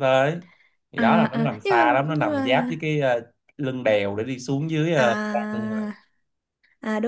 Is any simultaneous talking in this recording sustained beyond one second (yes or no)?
yes